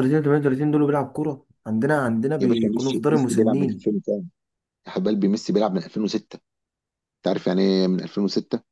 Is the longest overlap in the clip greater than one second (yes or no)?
yes